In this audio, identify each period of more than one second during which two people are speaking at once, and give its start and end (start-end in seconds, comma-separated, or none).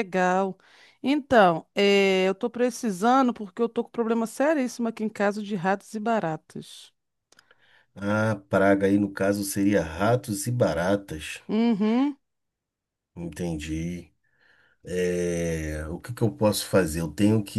none